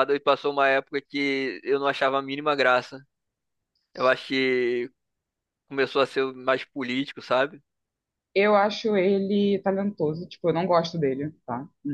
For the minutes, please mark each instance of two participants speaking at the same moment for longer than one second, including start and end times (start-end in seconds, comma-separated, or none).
none